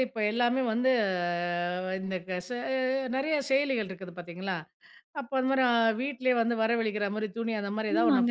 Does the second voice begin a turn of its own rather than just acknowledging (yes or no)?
yes